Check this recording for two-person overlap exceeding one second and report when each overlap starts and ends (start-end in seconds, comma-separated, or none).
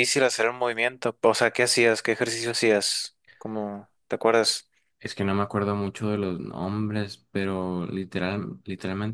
none